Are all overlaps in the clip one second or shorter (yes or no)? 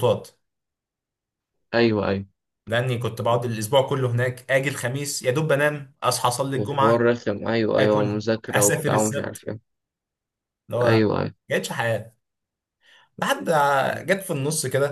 no